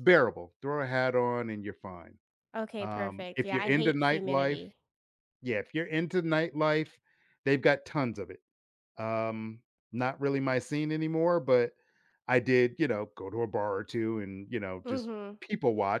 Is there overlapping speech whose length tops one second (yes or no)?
yes